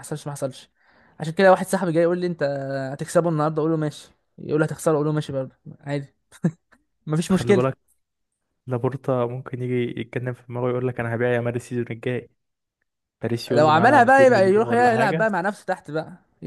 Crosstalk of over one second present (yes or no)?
yes